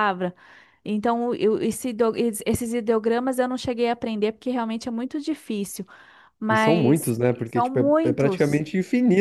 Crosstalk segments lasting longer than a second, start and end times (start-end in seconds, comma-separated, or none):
6.5-8.6